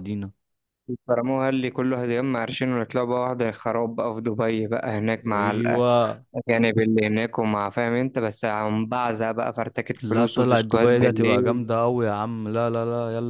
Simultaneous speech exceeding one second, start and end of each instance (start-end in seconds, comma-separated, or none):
10.0-11.6